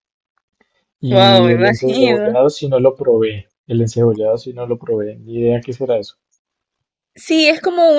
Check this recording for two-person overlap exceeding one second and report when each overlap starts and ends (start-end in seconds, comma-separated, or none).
1.1-2.3